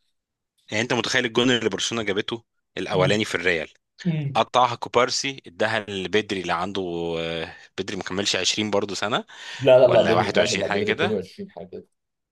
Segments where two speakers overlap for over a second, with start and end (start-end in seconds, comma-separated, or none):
9.8-11.2